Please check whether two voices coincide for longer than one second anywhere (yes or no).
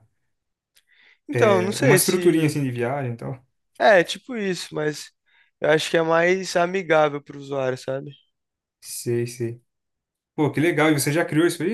yes